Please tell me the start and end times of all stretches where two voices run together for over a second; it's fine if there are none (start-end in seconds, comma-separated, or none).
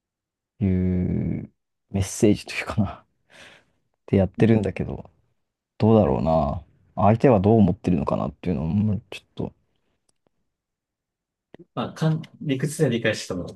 none